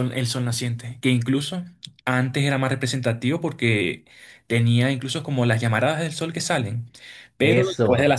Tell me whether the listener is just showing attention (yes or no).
yes